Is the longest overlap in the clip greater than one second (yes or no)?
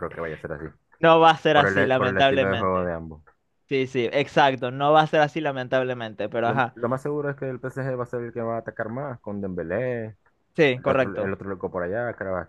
yes